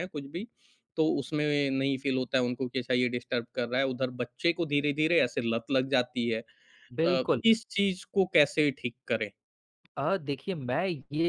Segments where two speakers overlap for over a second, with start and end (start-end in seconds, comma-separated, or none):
none